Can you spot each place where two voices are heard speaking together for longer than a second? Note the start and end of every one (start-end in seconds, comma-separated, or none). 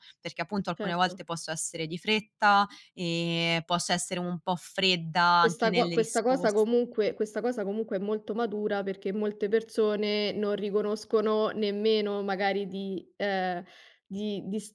5.4-6.7